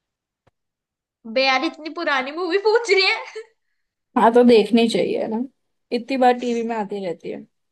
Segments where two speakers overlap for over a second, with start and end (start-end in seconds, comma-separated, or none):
none